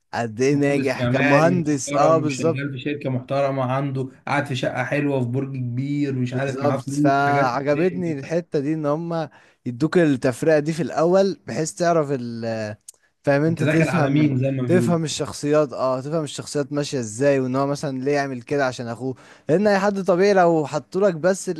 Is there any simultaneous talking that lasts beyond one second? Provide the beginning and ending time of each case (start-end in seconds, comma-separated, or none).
0.5-2.6, 6.3-8.4, 13.5-15.0